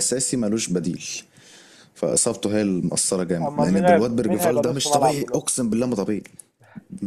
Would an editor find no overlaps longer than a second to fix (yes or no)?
no